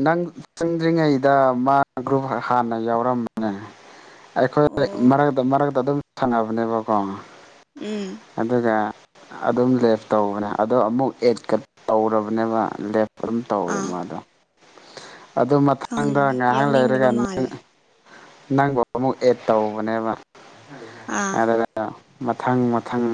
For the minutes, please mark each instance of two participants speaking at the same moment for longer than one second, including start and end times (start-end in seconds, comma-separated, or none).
15.9-17.4